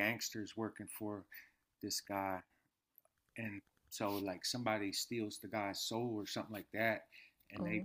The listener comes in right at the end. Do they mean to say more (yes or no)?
no